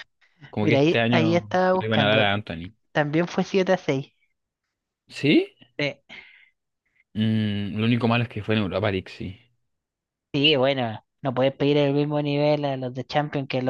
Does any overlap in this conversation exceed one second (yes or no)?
yes